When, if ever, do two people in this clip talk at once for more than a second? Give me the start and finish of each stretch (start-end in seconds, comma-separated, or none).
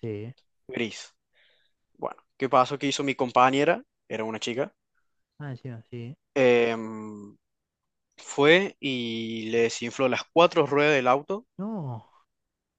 none